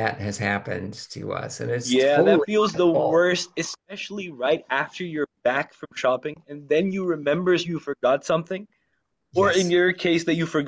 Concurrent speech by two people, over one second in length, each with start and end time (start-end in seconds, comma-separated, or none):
1.8-3.3